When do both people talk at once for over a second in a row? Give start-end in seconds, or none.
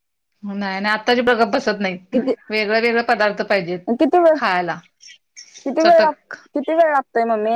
none